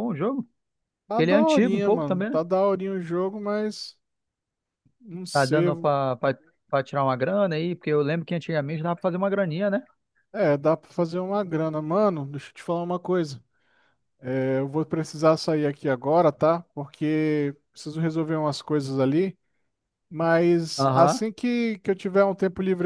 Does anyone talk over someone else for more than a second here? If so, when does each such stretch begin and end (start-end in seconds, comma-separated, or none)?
1.1-2.4